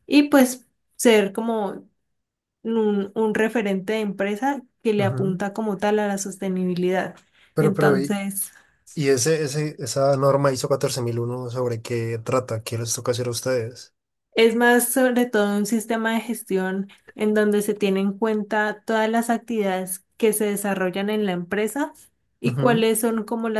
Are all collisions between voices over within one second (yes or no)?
yes